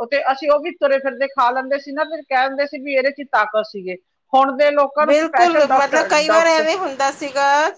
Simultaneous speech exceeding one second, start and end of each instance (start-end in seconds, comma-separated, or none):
5.1-6.7